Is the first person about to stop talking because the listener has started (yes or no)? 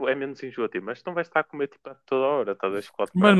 yes